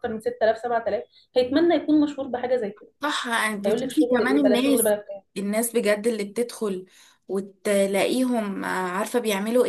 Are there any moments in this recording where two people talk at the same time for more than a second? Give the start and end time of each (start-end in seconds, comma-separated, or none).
3.6-4.9